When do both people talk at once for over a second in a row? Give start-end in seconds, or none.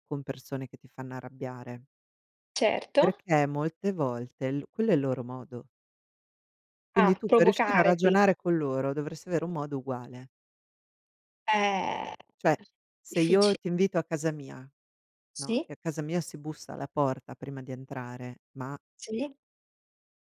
7.0-8.2